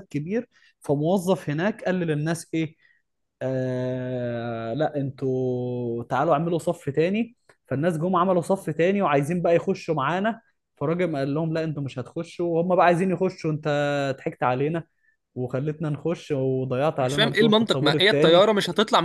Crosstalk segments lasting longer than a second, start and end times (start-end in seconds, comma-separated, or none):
17.0-18.5